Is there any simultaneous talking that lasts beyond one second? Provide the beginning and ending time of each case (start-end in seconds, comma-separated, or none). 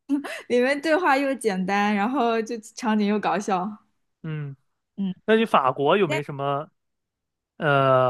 none